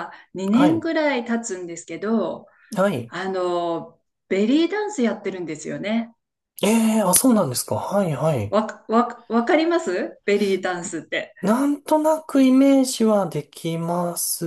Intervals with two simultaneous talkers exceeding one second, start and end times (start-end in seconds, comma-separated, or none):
none